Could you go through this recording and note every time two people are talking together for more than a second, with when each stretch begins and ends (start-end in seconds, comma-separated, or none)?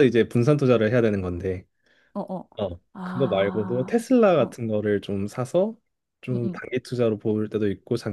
2.9-4.6